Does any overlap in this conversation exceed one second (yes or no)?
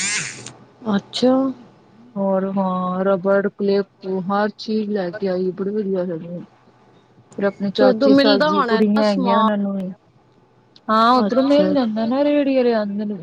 yes